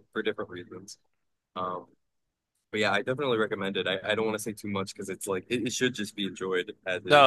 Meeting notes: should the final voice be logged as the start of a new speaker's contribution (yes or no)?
yes